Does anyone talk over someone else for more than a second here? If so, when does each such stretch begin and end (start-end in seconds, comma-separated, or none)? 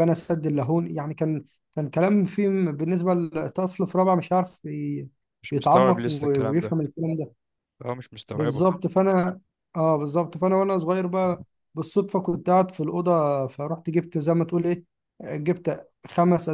5.5-6.8